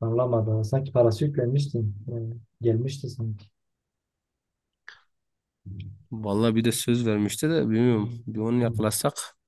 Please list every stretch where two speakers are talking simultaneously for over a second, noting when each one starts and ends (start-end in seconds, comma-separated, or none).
none